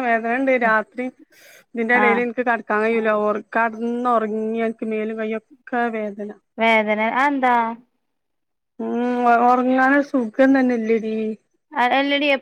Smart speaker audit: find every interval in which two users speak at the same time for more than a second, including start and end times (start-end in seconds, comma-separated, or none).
none